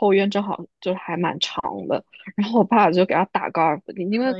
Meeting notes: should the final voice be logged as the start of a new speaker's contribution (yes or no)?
no